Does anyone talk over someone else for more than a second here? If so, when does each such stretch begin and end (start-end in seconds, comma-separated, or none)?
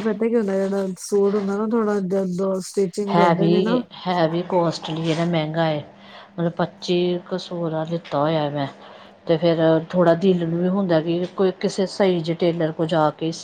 none